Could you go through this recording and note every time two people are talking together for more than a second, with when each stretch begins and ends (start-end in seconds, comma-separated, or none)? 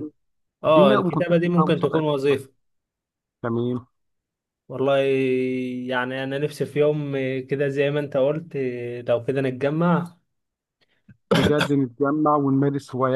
0.6-2.4